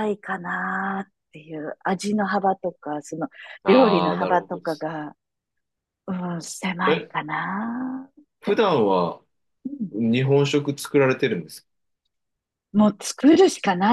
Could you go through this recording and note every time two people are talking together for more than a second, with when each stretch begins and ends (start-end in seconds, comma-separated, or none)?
3.6-4.9